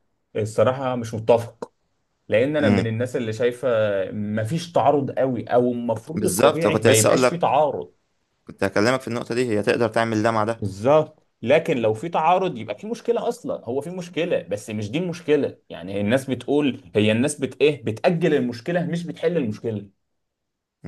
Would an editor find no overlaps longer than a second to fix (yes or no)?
no